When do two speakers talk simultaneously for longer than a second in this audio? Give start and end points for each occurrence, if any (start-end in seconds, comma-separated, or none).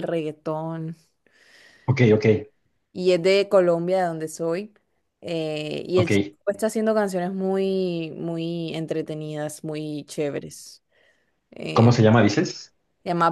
none